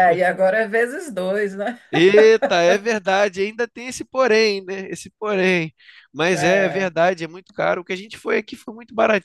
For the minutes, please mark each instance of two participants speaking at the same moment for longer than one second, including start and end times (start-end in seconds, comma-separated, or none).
none